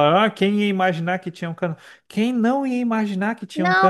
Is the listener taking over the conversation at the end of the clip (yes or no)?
yes